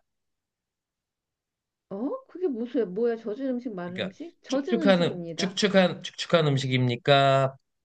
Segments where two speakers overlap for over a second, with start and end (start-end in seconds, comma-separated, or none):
3.8-5.6